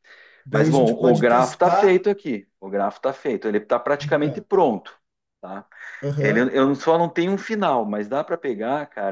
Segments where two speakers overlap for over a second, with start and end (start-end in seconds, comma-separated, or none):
0.5-2.0